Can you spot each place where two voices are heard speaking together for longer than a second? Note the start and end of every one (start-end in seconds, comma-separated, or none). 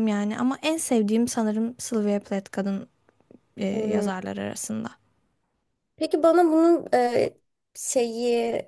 none